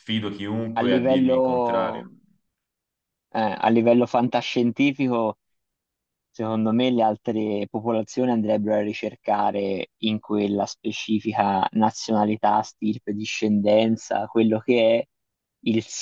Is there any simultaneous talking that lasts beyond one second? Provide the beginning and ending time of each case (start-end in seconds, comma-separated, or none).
0.8-2.1